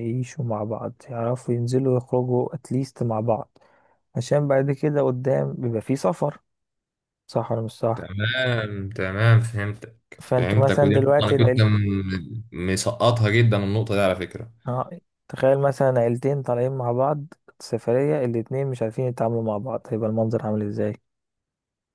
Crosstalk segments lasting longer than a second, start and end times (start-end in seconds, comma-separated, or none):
10.2-11.7